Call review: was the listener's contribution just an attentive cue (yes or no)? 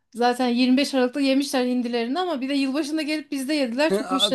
no